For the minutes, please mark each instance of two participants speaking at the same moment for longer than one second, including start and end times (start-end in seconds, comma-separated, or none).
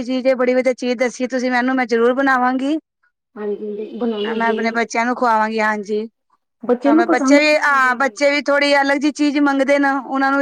6.9-8.3